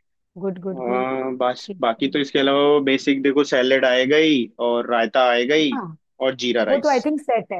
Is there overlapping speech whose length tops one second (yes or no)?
no